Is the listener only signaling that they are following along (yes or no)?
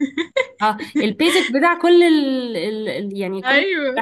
yes